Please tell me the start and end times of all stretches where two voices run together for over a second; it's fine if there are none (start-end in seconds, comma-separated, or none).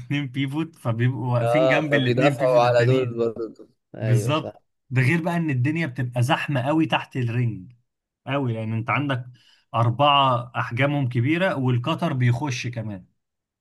1.4-3.2